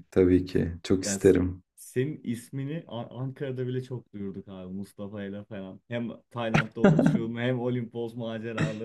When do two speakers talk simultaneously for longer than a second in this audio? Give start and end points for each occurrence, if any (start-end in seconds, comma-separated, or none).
none